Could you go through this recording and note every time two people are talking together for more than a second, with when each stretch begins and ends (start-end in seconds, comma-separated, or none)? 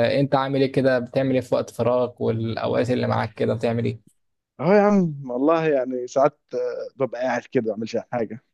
none